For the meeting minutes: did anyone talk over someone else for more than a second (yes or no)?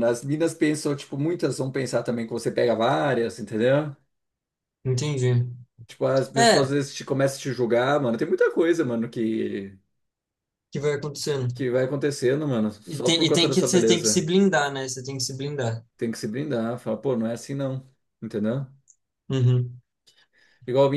yes